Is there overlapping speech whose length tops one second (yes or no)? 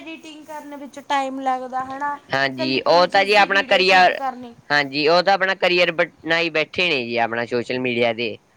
yes